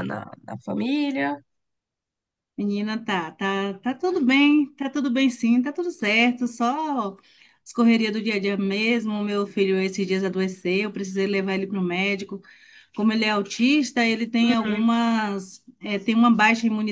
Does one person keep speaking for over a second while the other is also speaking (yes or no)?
no